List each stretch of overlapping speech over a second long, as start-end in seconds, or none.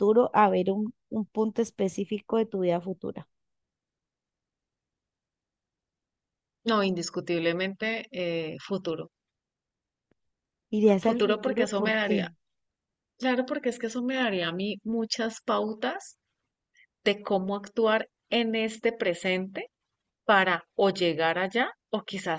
11.0-12.3